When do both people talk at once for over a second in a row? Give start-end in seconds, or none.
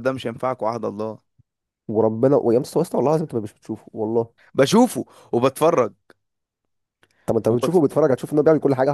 none